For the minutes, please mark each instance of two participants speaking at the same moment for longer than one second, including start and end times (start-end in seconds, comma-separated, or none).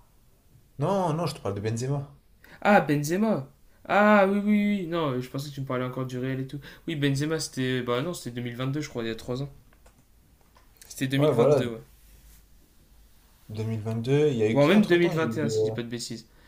14.5-15.7